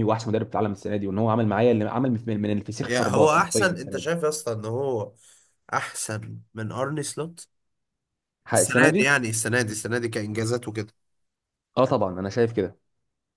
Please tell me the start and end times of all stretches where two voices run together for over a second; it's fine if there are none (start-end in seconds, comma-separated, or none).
2.8-4.1